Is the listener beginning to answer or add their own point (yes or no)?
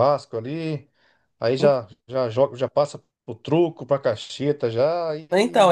yes